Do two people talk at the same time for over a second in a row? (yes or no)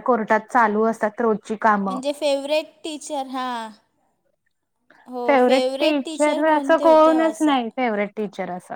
yes